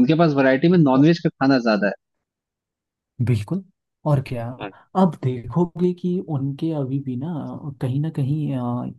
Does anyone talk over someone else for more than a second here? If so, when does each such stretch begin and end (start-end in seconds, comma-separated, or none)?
none